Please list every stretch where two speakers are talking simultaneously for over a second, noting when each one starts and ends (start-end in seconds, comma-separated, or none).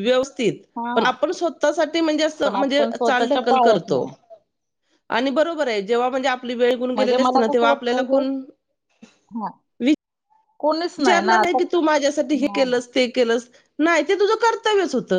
2.4-4.0, 7.0-8.2